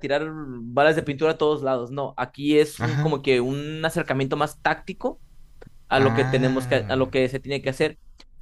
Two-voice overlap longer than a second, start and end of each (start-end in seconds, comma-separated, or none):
5.9-7.1